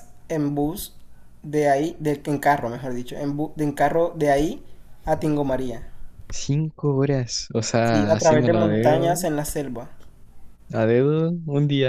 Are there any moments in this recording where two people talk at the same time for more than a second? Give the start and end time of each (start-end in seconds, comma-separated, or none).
7.8-9.2